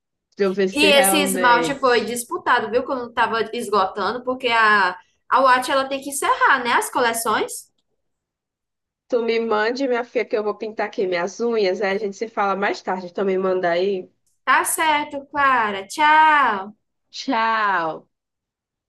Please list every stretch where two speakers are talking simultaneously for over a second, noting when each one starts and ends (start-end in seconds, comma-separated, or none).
0.7-2.1